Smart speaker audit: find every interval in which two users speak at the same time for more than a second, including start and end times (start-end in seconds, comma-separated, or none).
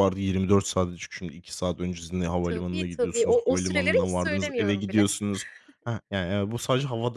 2.4-5.1